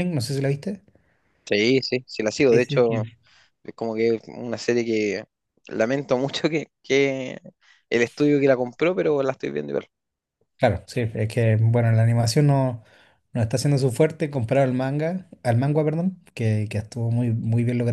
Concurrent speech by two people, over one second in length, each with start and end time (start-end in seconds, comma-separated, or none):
none